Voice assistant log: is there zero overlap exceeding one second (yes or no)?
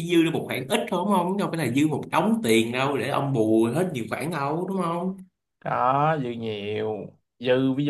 yes